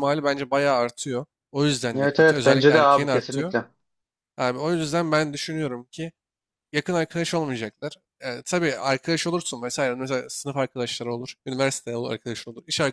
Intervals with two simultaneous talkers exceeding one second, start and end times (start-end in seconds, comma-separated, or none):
1.9-3.5